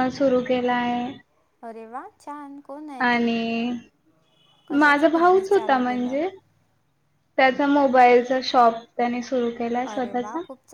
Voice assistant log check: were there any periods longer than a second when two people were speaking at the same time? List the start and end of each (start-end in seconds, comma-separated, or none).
4.8-6.3